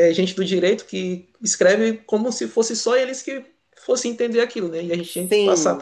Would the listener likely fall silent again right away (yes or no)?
no